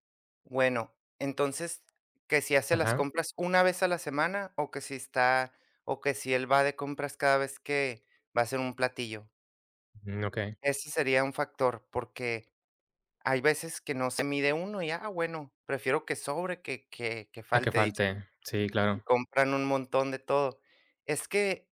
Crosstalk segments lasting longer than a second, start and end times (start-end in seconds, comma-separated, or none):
none